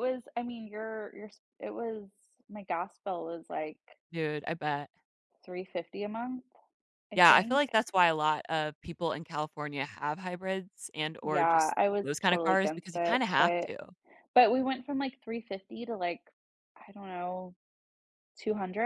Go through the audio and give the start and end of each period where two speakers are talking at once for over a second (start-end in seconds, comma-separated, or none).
11.2-13.7